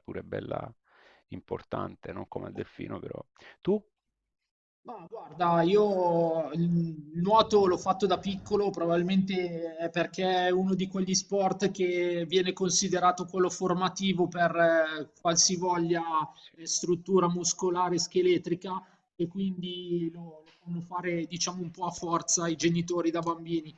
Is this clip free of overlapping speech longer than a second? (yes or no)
yes